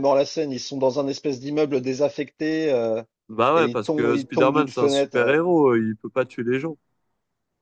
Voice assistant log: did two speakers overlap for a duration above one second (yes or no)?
yes